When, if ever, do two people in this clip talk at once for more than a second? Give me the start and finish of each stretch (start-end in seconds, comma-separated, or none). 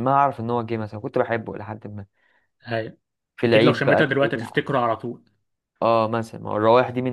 3.4-4.6